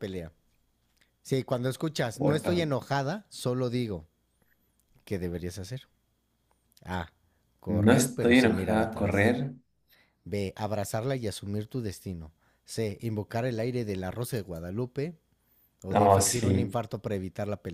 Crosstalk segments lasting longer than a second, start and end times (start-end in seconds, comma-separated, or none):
7.7-9.3